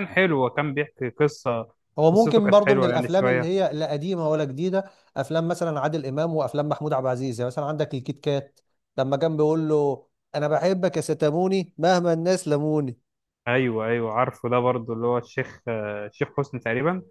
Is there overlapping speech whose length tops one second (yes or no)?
yes